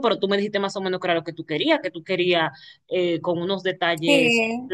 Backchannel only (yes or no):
yes